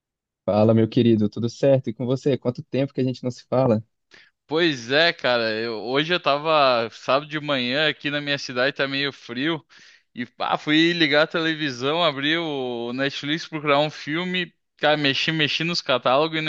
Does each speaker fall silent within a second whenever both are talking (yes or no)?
yes